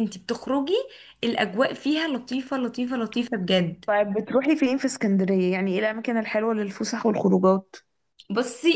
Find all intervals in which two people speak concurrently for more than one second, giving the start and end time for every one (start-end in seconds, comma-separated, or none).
none